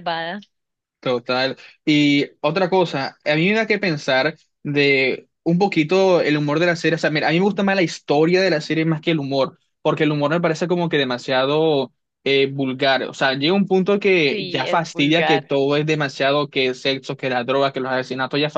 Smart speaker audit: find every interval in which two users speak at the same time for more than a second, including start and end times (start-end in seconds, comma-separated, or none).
14.3-15.5